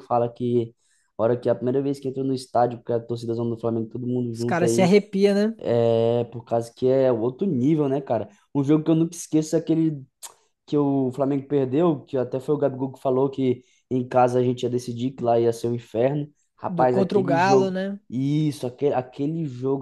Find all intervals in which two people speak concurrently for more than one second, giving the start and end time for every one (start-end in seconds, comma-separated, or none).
16.7-18.0